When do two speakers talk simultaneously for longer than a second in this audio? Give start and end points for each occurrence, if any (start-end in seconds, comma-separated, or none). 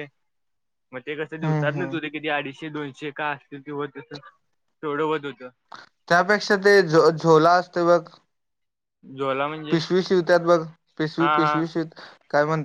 none